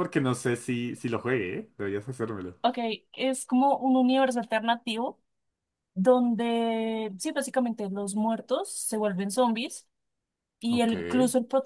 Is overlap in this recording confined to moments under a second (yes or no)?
yes